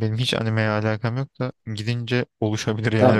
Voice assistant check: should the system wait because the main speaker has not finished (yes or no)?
no